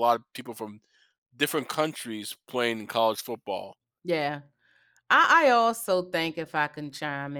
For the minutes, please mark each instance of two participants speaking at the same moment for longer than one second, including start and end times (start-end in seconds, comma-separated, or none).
none